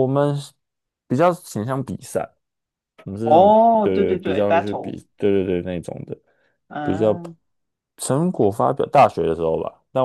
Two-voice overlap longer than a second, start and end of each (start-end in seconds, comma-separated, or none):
3.2-5.0